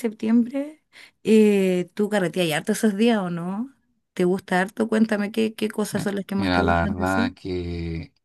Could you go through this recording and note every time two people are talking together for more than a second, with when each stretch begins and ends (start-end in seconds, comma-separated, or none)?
6.0-7.3